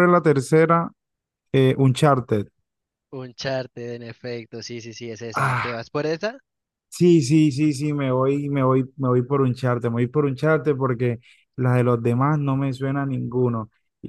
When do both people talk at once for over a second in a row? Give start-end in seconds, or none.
none